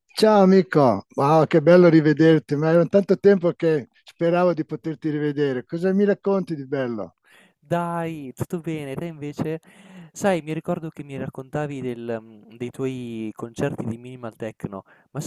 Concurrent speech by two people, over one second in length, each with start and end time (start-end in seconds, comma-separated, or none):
none